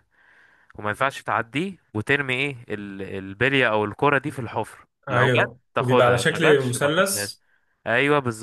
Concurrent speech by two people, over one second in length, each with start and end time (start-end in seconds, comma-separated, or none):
5.1-7.3